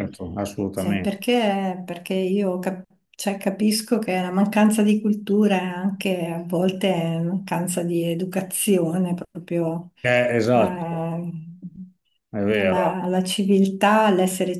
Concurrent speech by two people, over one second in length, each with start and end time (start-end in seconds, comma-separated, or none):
none